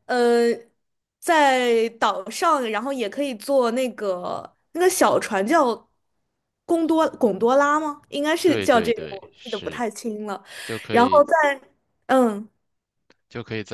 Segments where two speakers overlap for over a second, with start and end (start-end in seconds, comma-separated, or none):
8.4-9.8